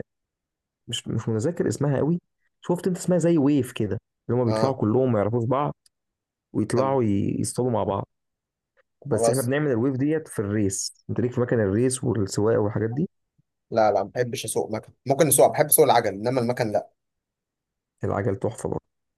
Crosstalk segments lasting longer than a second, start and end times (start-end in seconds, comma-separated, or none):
none